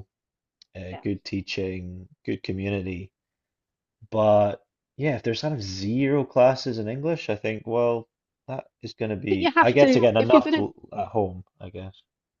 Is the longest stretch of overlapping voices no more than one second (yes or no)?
no